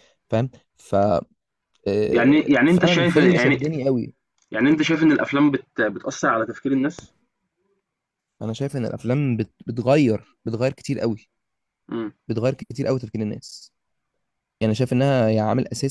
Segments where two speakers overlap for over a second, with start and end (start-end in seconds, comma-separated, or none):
2.1-3.6